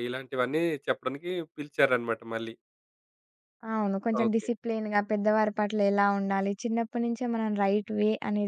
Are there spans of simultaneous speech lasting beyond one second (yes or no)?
no